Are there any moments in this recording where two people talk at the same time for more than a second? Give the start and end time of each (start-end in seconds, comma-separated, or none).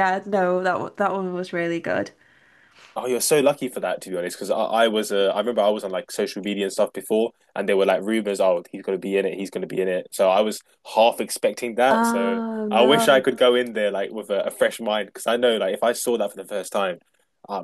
11.9-13.2